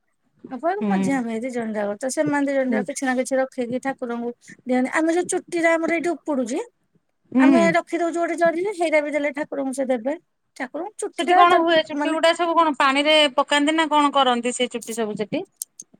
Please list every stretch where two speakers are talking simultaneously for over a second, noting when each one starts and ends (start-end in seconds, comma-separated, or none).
none